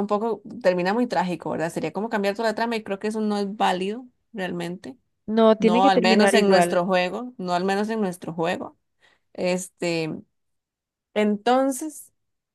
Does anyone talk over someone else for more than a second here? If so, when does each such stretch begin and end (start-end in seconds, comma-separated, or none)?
5.6-6.8